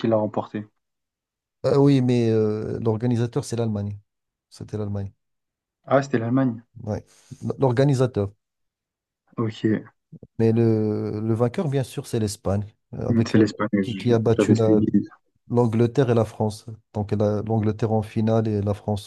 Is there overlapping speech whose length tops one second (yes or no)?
yes